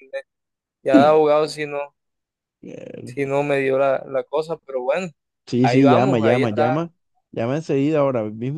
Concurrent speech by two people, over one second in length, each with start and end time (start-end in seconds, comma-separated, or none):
5.6-6.9